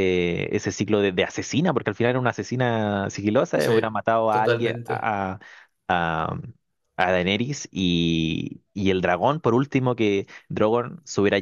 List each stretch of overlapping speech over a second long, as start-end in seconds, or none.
3.6-5.1